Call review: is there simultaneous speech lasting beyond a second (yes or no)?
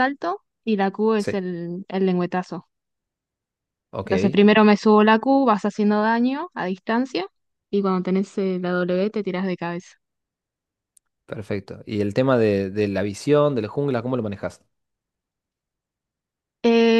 no